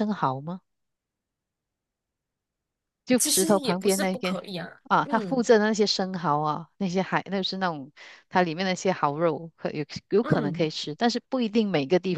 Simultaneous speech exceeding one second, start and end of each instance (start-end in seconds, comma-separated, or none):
3.2-4.4